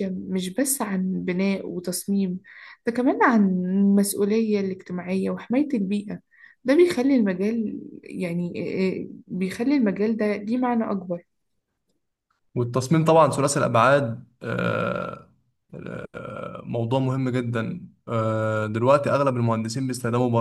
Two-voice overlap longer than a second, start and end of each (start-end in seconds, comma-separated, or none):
none